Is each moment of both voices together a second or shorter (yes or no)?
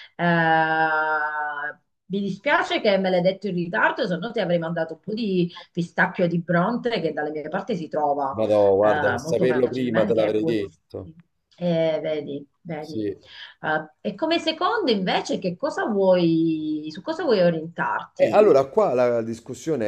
no